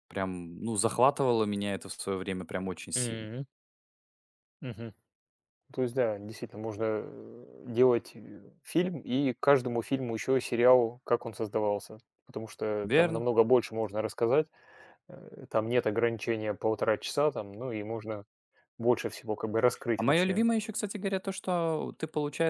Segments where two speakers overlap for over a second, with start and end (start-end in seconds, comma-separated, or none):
none